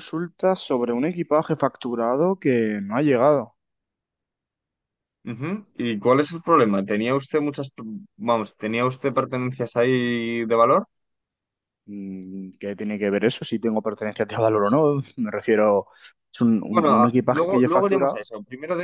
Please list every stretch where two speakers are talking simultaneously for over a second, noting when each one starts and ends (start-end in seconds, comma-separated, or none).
16.7-18.2